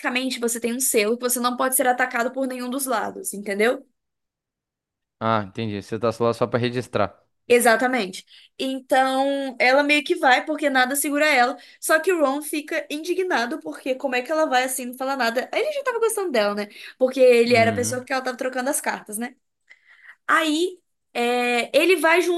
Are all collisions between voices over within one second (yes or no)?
yes